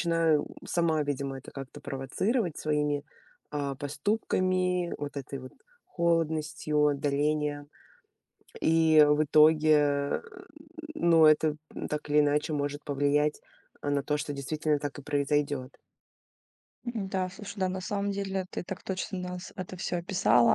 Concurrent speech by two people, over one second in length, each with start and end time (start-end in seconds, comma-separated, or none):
none